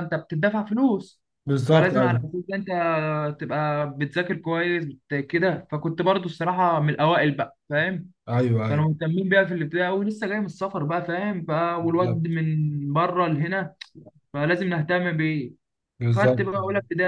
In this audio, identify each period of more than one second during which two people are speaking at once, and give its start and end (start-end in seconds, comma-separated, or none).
none